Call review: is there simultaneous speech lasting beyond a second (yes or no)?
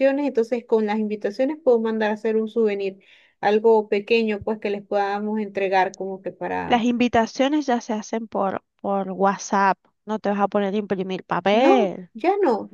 no